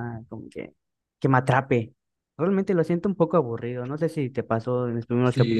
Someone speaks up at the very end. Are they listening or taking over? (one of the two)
taking over